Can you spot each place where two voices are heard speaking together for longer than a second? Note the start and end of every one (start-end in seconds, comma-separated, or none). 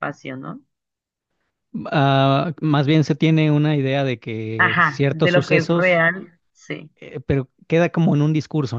4.6-6.0